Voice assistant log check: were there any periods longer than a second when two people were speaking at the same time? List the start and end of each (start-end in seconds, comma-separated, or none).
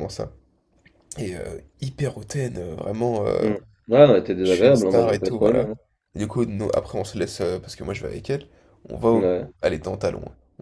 4.4-5.7